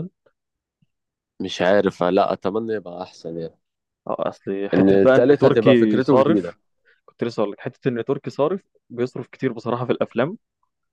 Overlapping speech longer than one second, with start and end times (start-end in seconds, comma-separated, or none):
4.7-6.6